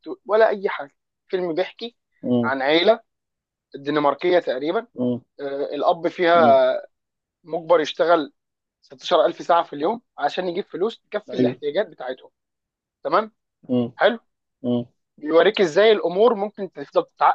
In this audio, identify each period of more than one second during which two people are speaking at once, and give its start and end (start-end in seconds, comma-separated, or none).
none